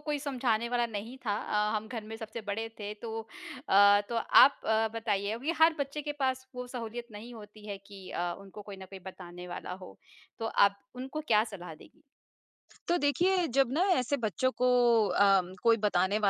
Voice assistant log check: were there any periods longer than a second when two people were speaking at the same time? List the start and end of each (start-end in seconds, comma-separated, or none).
none